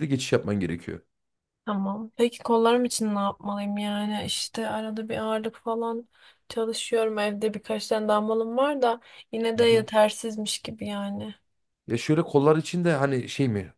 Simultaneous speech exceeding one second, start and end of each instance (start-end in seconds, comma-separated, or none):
none